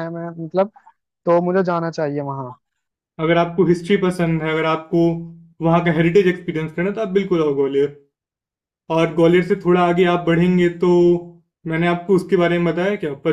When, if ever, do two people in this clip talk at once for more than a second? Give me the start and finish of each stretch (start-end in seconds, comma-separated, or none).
none